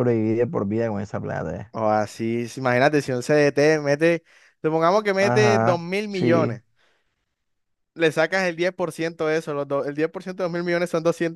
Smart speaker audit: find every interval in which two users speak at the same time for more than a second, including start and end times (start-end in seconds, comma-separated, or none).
5.2-6.6